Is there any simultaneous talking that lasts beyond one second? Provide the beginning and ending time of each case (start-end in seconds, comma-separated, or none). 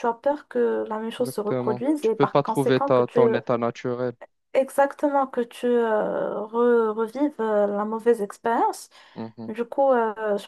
1.2-3.2